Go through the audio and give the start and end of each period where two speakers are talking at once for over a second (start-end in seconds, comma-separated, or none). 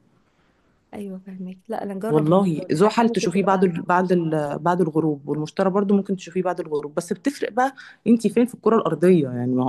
2.1-3.7